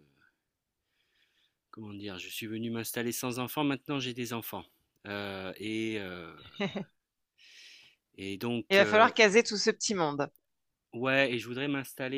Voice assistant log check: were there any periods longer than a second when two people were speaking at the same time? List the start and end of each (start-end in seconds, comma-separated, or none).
none